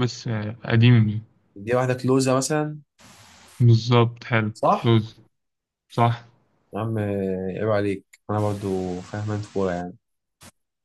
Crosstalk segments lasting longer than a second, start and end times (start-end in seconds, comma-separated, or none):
none